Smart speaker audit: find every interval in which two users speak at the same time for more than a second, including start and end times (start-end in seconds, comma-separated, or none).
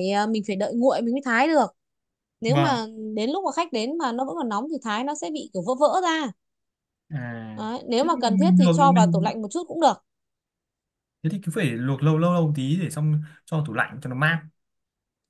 8.0-9.3